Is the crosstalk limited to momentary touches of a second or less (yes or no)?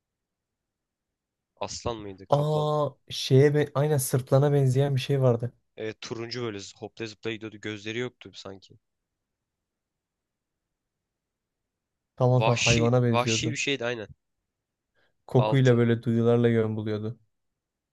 no